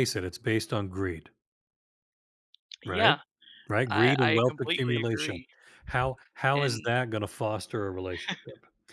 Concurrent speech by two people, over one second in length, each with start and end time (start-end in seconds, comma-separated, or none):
3.9-5.4